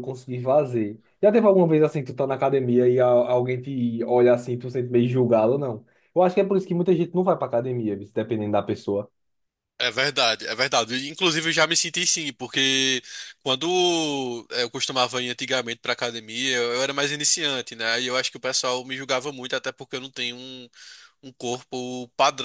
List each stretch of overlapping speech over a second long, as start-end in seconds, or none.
none